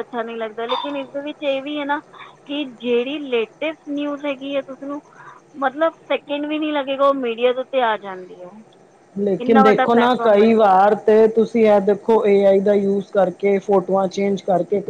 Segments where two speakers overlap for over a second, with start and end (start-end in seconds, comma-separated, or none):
none